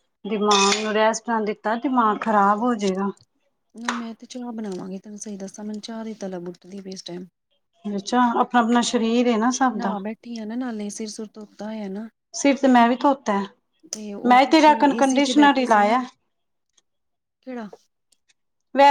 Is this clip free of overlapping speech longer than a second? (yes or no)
no